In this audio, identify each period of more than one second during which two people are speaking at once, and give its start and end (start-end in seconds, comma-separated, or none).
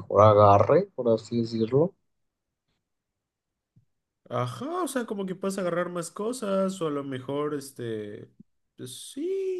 none